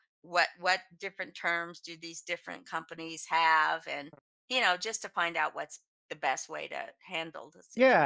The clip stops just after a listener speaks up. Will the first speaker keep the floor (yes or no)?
no